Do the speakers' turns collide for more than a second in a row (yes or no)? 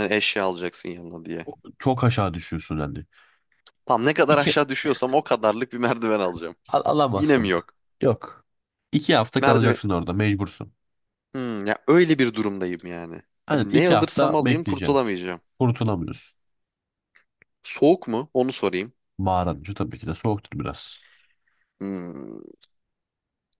yes